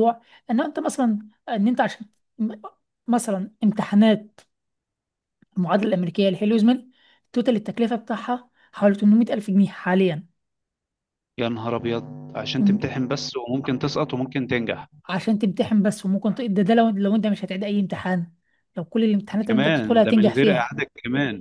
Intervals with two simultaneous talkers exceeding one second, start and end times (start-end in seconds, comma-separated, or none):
19.5-20.7